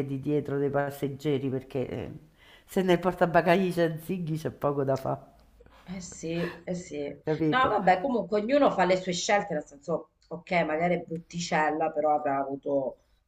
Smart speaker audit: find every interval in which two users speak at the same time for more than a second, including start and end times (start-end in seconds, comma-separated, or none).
none